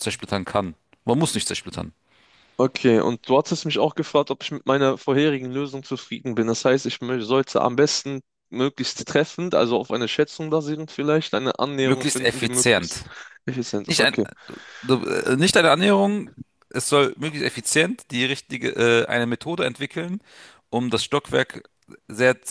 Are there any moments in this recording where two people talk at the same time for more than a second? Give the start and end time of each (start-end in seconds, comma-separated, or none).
11.8-13.0